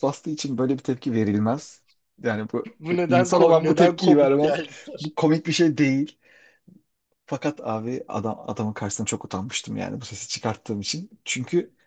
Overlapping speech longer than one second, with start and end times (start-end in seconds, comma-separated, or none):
2.8-4.5